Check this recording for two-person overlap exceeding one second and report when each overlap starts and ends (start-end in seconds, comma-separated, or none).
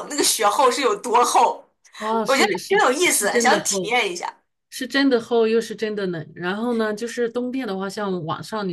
2.2-3.9